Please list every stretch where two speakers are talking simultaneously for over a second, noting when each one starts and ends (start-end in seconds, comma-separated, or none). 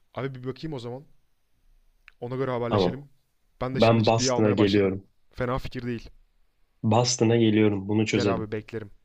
3.7-5.0